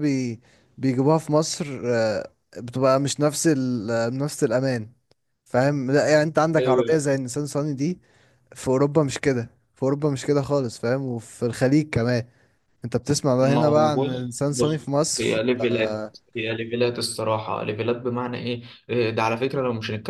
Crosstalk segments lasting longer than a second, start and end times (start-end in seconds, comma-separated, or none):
13.4-16.1